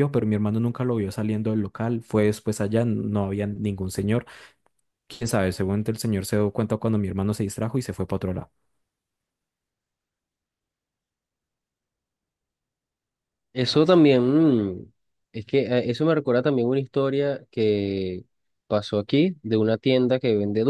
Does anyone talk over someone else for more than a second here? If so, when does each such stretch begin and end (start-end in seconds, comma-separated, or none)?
none